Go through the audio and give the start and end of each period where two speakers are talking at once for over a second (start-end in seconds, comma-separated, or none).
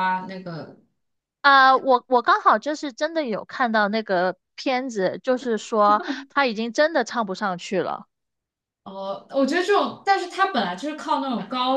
none